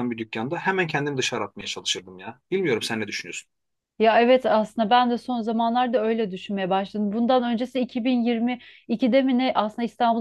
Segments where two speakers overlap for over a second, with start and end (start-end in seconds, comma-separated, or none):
none